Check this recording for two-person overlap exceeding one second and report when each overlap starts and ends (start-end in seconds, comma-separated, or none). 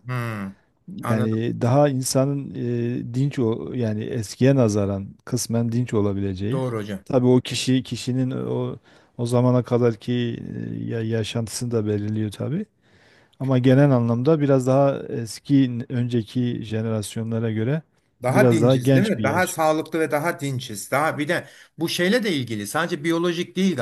18.3-19.6